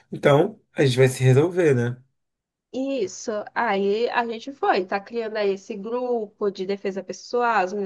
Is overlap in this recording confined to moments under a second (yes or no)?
yes